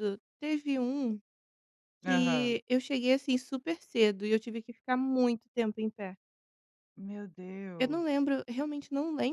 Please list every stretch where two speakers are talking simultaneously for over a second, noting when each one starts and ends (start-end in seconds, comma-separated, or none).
none